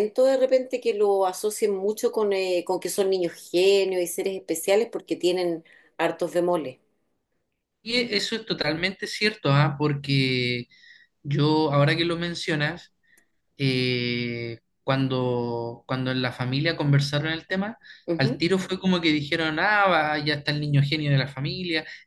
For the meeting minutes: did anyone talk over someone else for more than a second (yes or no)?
no